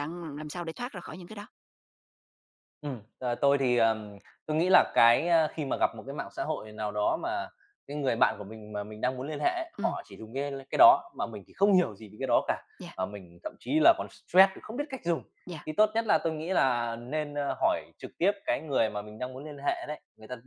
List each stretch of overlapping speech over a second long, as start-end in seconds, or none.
none